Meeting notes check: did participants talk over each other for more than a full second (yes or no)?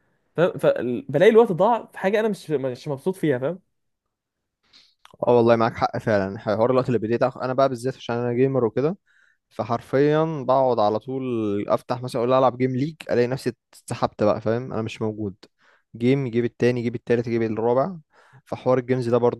no